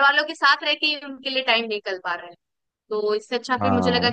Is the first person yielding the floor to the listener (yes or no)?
no